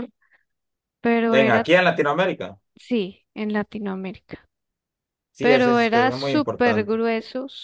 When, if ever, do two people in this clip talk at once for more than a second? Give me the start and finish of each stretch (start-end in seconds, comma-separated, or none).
5.4-6.9